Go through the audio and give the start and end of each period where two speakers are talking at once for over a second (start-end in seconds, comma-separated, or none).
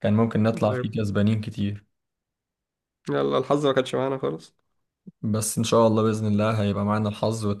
none